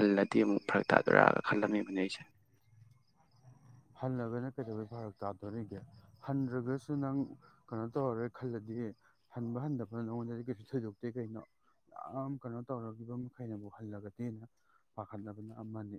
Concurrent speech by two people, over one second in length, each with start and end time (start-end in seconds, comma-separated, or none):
none